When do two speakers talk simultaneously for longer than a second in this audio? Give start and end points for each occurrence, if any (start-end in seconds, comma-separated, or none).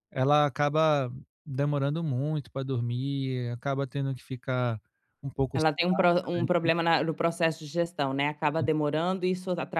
none